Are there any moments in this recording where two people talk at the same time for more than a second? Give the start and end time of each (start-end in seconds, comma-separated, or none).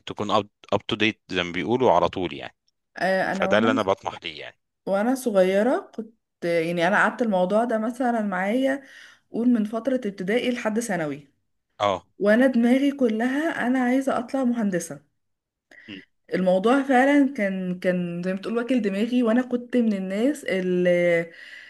none